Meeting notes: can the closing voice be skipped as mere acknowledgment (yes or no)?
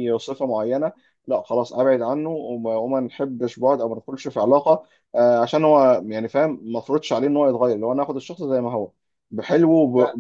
yes